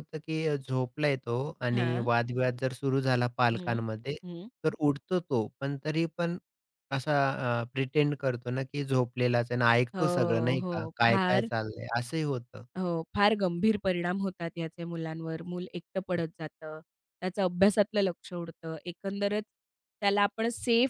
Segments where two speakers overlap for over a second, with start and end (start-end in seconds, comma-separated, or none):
9.9-11.5